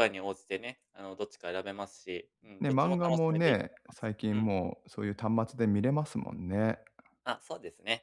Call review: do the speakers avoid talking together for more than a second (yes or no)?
no